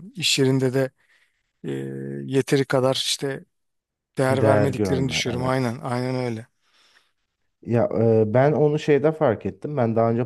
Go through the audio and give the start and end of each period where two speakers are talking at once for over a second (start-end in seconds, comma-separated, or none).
4.3-5.8